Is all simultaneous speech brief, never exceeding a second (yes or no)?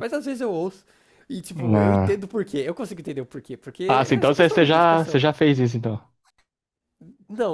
no